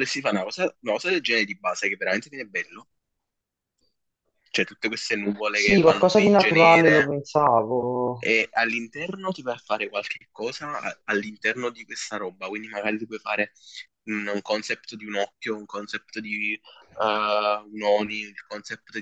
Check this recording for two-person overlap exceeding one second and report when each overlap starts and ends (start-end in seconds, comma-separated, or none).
5.5-7.2